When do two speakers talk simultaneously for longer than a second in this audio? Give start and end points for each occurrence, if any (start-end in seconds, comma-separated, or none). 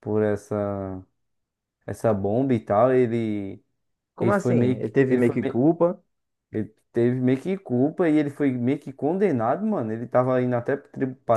4.2-5.7